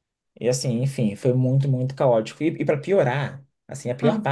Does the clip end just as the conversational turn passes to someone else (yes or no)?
no